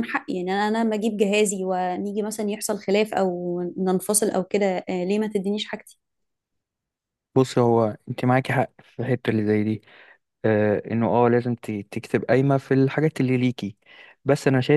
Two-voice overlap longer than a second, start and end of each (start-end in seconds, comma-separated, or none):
none